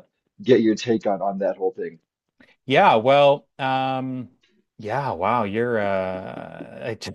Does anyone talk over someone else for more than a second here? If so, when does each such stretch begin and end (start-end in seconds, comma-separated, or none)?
none